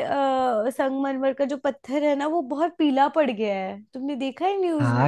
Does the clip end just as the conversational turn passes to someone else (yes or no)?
yes